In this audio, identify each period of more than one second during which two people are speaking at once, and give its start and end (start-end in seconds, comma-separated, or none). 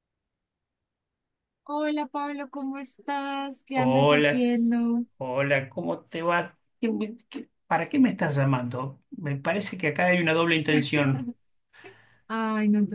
3.8-5.0